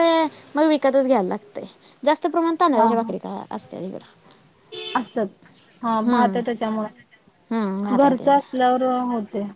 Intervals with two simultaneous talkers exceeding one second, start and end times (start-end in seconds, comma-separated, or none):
none